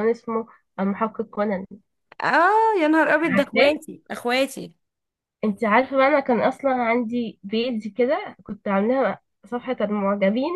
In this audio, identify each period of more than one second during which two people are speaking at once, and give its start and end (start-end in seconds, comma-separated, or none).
none